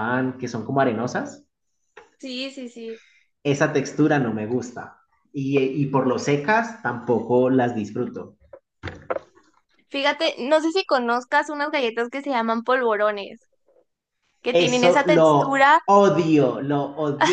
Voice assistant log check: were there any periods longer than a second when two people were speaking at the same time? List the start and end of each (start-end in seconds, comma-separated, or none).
14.5-15.8